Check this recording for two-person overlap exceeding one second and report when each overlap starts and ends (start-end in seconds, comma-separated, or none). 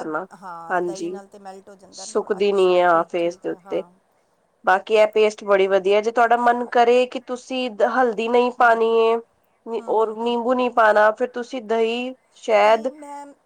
2.0-3.8